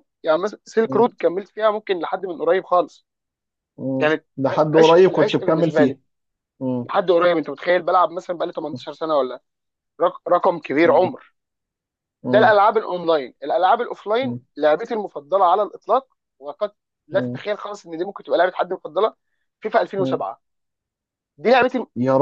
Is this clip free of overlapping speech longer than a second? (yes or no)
no